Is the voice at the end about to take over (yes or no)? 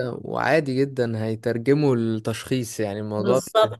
no